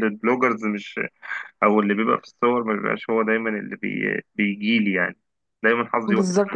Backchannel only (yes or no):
no